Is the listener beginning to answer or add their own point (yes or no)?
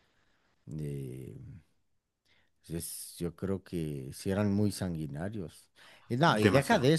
no